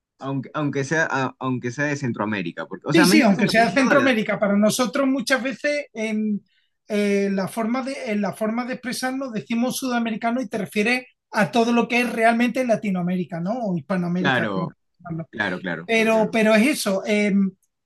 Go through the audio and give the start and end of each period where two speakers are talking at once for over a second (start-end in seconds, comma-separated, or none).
2.9-4.2